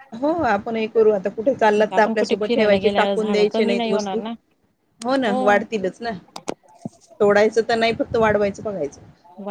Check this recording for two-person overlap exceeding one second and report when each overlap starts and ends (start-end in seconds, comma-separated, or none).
2.2-4.2